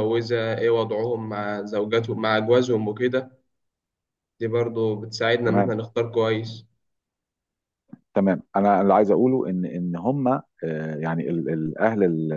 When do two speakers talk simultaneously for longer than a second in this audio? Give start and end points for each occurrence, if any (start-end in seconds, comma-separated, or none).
none